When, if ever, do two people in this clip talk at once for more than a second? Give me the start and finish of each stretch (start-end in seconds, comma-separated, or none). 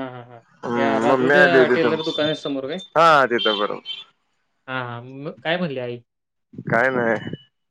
0.8-2.3